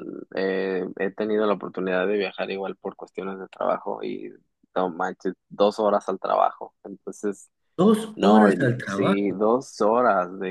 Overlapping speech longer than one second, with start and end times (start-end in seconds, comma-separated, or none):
8.2-9.4